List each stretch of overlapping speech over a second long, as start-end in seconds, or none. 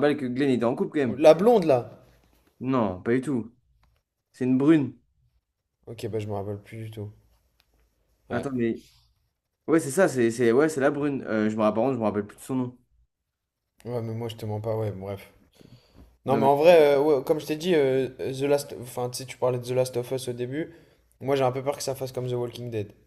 none